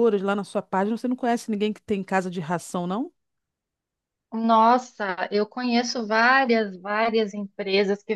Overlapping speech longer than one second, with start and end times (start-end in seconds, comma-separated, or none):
none